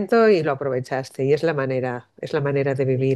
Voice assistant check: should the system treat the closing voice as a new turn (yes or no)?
no